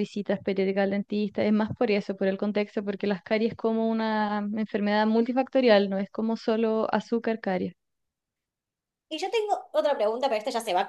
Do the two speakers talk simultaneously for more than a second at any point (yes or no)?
no